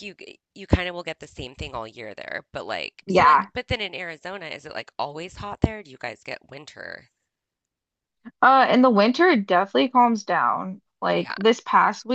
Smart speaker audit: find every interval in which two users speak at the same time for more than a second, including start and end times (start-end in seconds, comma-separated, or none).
none